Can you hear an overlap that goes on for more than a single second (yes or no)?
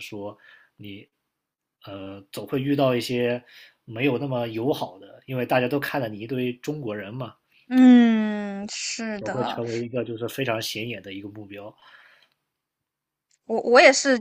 no